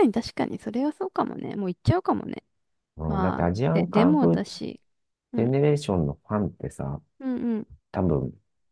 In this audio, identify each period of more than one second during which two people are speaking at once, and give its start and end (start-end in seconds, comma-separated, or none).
3.1-4.6